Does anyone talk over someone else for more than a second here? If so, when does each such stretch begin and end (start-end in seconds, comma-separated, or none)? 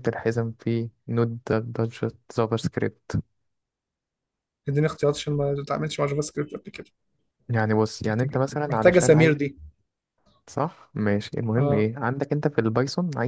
8.1-9.4